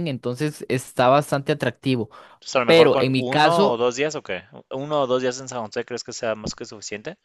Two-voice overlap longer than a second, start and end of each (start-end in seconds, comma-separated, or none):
2.6-3.9